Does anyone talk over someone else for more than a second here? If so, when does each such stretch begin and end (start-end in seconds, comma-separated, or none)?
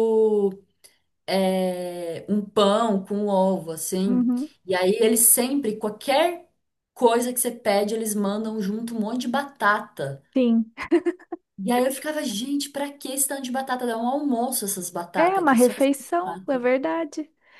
15.2-16.6